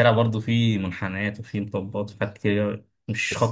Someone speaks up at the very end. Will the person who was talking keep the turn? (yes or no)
no